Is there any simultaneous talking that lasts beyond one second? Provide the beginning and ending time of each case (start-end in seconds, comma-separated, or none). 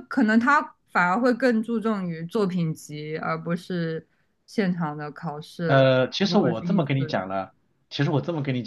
5.7-7.2